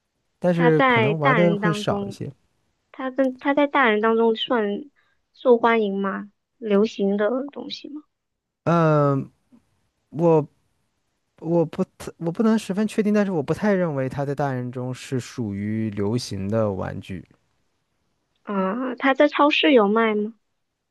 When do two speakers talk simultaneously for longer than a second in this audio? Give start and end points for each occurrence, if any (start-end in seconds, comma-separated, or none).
0.5-2.2